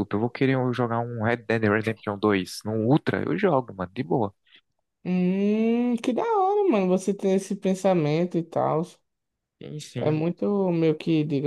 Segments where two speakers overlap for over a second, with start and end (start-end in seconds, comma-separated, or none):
none